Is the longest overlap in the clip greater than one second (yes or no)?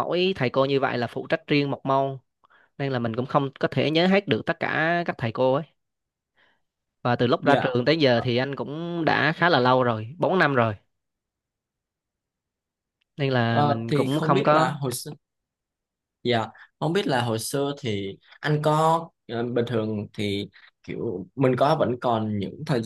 yes